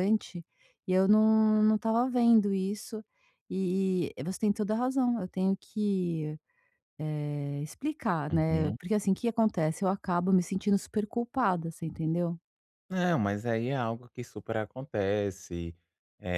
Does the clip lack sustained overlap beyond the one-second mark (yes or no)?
yes